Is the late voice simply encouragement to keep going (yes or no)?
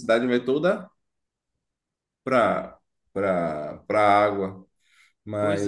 no